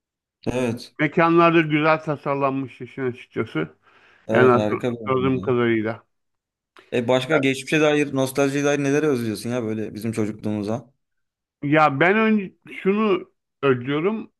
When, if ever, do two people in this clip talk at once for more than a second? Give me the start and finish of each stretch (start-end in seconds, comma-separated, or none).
4.3-5.5